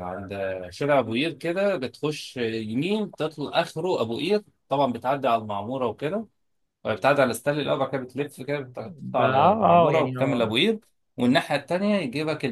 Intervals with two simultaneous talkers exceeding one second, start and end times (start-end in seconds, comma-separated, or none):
9.0-10.5